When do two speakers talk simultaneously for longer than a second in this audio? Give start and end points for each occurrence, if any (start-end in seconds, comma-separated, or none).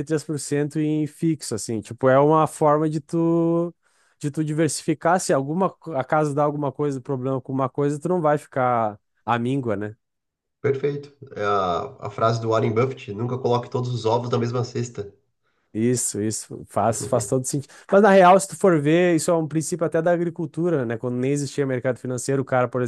none